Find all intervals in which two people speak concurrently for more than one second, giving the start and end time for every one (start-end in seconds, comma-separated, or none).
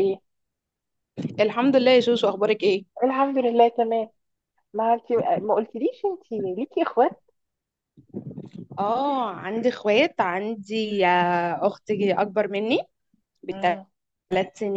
none